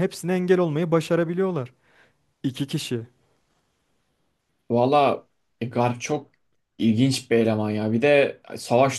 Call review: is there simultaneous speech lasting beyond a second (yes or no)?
no